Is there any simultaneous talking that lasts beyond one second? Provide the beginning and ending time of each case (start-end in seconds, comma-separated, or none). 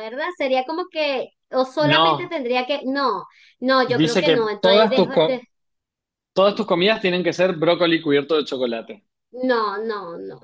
3.9-5.4